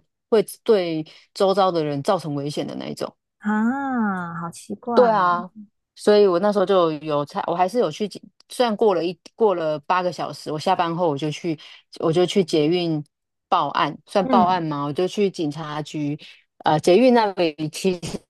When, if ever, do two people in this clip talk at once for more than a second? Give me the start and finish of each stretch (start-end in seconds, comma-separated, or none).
none